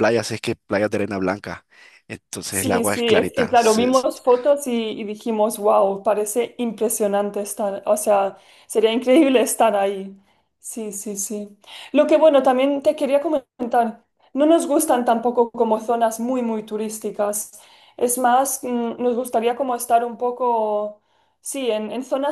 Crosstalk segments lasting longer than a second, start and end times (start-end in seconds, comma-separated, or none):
2.5-4.1